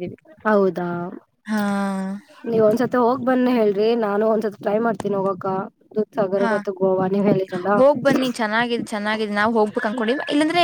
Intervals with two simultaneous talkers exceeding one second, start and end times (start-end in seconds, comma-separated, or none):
none